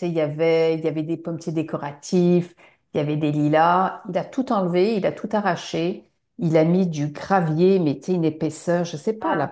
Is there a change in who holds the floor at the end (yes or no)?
no